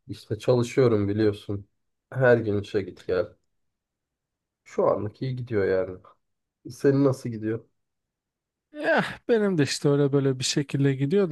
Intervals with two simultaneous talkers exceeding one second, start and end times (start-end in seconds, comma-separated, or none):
none